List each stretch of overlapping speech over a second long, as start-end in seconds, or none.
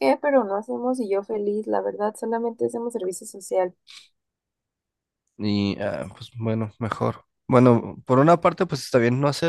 none